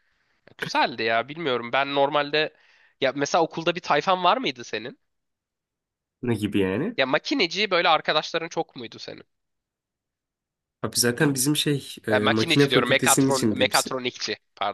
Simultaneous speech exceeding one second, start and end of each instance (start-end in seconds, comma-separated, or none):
12.1-14.0